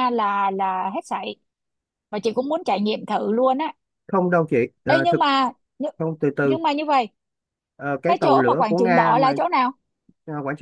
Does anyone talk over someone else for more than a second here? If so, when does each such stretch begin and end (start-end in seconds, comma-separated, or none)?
8.1-9.3